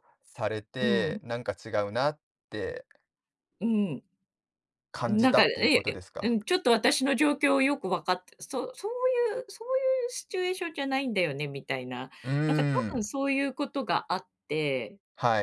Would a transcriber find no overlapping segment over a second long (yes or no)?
no